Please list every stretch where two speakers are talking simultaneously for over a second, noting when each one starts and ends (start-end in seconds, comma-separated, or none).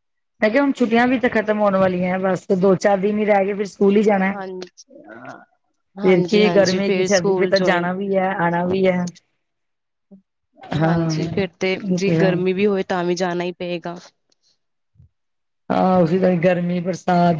6.0-7.9